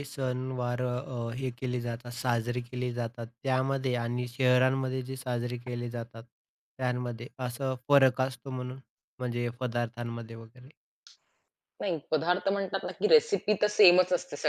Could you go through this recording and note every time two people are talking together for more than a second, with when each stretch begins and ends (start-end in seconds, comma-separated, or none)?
none